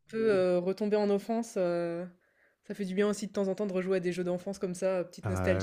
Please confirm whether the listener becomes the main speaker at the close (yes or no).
yes